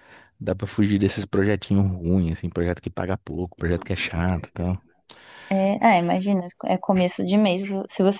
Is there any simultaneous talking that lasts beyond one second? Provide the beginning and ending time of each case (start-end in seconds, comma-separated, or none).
none